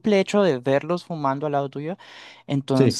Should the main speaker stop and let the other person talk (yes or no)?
no